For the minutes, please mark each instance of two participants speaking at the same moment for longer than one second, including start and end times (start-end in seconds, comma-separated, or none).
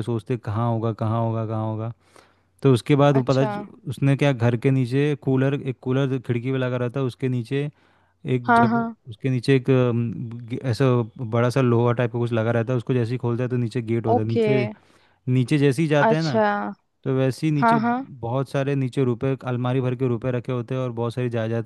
none